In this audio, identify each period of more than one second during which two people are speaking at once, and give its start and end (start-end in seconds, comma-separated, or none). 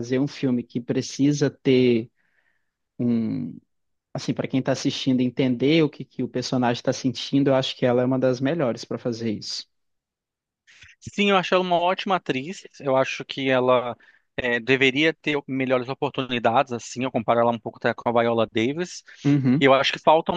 none